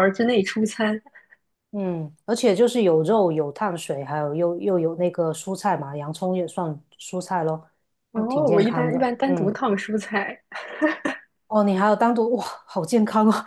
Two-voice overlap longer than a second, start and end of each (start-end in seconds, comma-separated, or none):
8.1-9.5